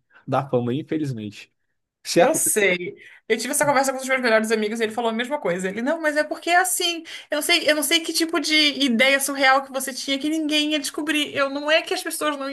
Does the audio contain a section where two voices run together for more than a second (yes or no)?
no